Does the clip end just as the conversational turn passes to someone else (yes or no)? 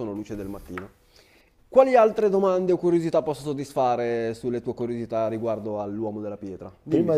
yes